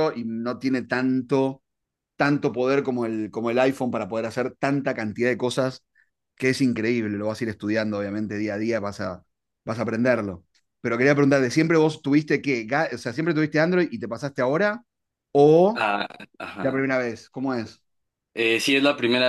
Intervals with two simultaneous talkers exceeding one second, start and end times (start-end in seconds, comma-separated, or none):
none